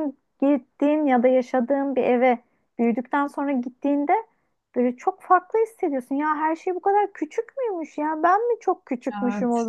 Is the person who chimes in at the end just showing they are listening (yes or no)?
yes